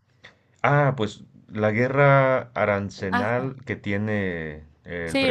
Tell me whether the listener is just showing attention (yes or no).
no